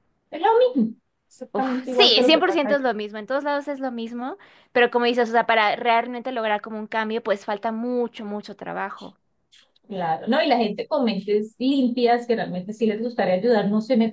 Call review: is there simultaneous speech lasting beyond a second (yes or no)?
yes